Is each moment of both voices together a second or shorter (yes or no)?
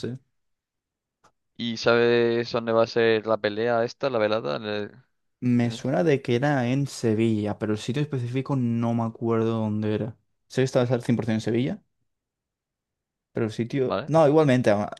yes